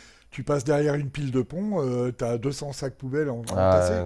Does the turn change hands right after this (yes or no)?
yes